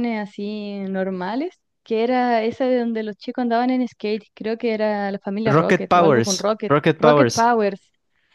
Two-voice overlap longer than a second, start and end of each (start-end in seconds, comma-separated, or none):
5.5-7.5